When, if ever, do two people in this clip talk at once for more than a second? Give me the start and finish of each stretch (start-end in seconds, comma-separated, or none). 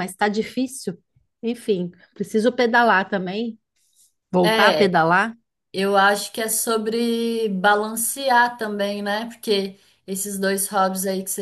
none